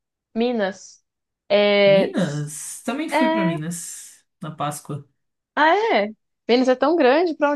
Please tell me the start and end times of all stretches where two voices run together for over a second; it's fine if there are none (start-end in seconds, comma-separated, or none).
none